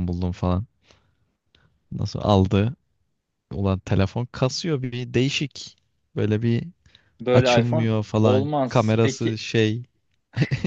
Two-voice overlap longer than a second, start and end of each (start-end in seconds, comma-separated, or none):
7.3-9.4